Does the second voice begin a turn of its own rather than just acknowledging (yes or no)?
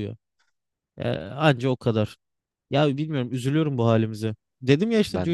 no